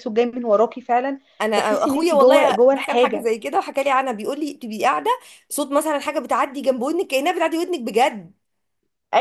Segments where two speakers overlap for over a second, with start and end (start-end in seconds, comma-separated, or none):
1.6-3.3